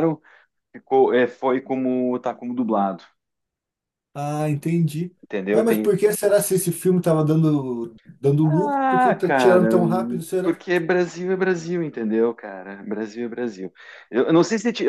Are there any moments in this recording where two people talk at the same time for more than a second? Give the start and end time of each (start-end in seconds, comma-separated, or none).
8.4-9.7